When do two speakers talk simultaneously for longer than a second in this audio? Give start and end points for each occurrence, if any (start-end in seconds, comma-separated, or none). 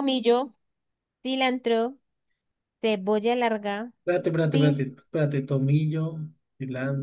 none